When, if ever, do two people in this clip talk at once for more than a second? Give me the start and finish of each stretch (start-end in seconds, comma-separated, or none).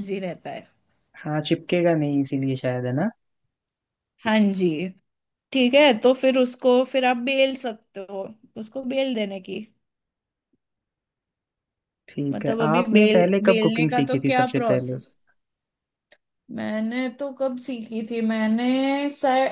12.3-15.0